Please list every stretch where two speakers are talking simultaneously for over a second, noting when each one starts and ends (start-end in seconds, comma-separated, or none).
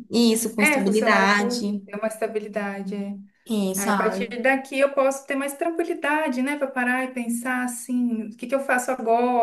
0.6-1.8